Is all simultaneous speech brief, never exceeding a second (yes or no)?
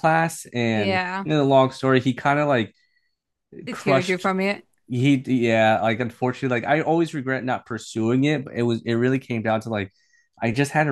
yes